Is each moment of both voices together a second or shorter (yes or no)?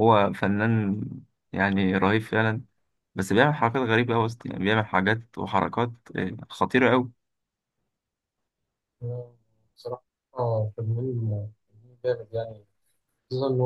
yes